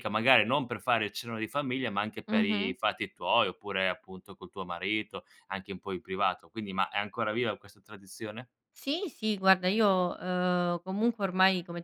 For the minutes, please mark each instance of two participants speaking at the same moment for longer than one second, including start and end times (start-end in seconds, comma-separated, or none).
none